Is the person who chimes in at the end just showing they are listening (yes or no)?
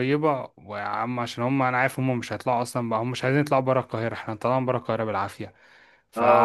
no